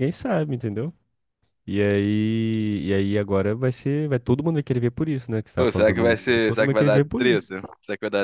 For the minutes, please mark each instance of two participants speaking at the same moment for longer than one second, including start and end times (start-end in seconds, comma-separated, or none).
5.6-7.5